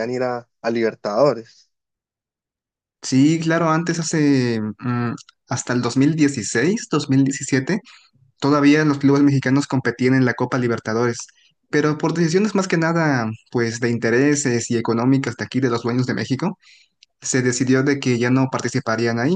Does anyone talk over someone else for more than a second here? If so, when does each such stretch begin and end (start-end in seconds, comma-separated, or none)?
none